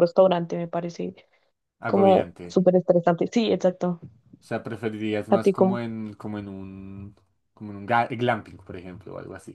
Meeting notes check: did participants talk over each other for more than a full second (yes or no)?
no